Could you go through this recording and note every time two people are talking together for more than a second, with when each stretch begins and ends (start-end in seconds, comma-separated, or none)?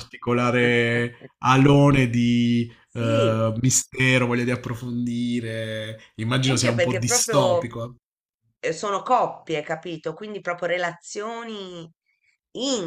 6.4-7.7